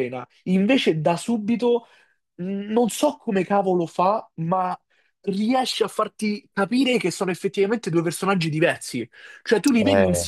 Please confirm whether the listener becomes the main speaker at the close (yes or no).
no